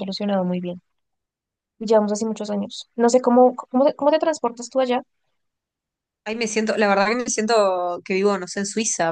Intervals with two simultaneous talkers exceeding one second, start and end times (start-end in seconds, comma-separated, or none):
none